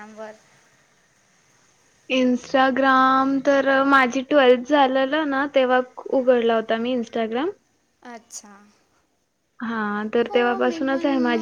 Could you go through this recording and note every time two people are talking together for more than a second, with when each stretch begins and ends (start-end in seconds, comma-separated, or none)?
none